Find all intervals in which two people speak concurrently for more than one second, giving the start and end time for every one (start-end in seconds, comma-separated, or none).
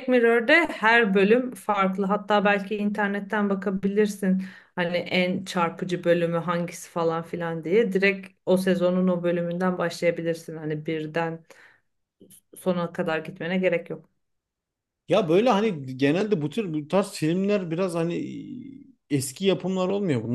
none